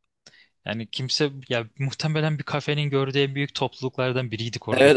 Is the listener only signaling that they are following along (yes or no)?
no